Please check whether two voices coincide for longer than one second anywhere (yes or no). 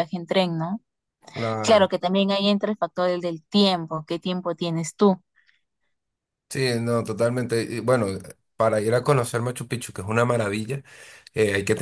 no